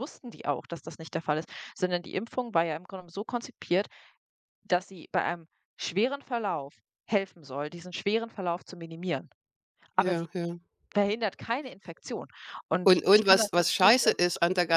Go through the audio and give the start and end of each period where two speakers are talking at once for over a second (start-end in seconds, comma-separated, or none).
12.8-14.2